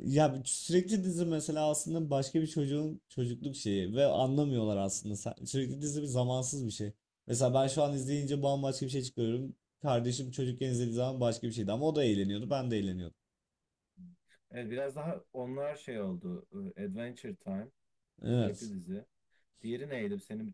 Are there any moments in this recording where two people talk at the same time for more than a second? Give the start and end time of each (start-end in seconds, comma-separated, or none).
none